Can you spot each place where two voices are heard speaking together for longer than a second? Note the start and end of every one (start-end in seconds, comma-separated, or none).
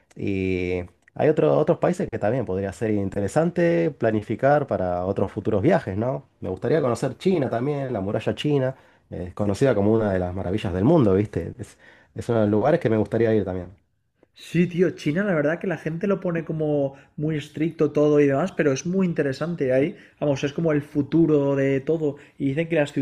none